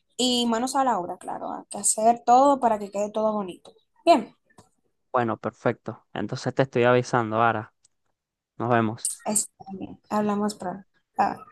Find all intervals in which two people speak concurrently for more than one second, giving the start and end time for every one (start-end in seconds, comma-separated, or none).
none